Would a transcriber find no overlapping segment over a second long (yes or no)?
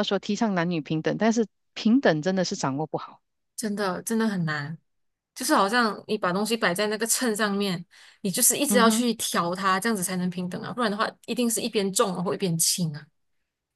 yes